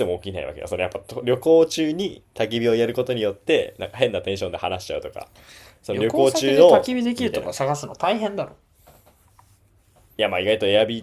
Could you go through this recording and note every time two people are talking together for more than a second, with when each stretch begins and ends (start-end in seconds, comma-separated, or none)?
5.9-7.5